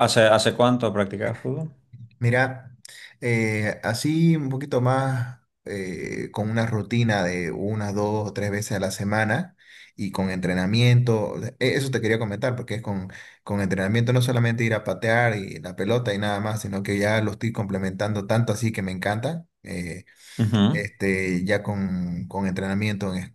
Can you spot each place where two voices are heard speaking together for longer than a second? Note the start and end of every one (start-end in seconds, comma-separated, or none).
none